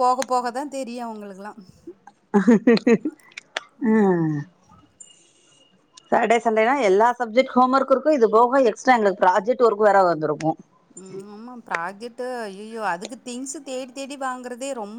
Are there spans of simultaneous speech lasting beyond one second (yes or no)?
no